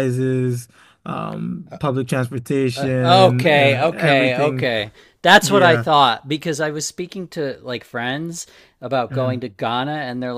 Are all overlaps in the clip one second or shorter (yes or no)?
no